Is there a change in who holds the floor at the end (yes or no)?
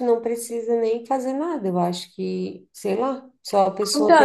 yes